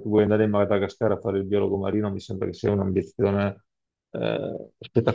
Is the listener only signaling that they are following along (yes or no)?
no